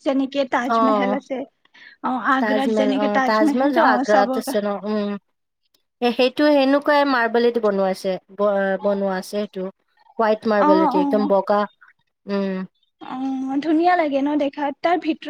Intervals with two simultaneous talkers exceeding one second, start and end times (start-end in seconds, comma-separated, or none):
2.4-4.4